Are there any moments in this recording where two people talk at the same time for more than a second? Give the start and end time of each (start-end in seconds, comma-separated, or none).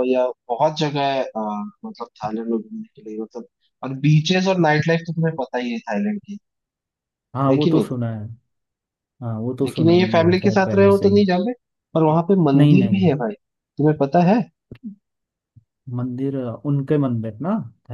9.6-11.2